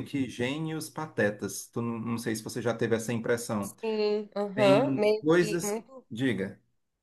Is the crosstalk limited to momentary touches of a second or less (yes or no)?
no